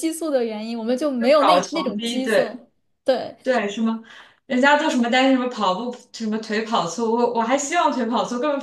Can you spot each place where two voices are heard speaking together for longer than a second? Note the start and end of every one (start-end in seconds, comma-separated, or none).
1.2-2.6